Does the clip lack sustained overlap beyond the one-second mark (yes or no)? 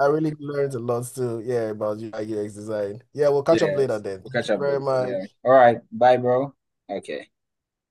no